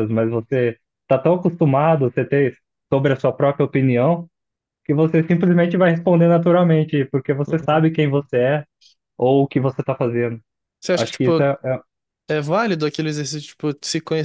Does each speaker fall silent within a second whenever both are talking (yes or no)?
yes